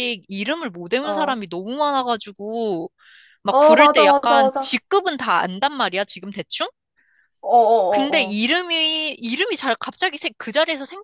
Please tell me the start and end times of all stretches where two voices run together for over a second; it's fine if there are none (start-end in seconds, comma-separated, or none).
3.5-4.8